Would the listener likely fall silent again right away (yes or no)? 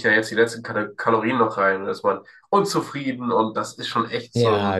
no